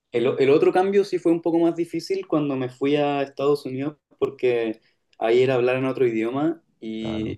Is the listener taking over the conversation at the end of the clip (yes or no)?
no